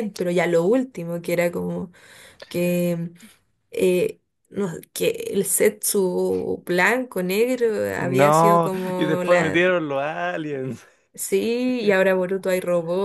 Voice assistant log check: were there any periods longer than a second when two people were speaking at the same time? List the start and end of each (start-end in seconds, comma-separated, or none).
8.0-9.6